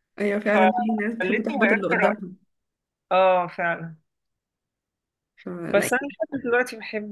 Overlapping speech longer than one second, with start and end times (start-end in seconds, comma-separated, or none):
0.5-2.2